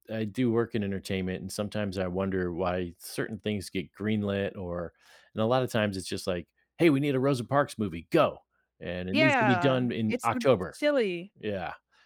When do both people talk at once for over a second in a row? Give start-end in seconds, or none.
9.1-10.8